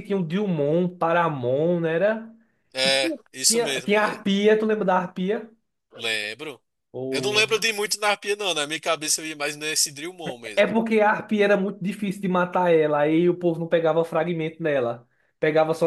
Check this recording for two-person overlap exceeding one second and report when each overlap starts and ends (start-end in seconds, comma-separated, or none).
2.8-4.2